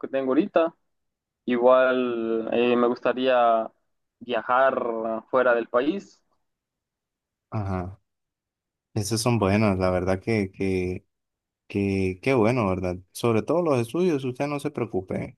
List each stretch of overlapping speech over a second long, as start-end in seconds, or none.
none